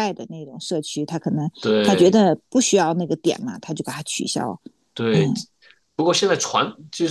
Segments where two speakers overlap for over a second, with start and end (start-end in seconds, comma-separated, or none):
none